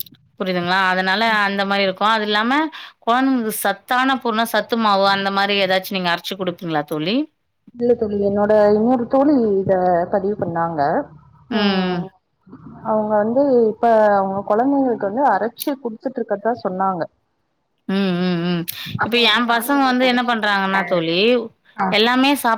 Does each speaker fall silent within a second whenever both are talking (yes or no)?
no